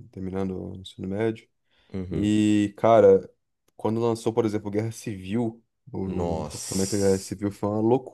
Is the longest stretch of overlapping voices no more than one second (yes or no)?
no